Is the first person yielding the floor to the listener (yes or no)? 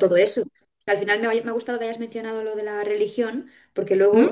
no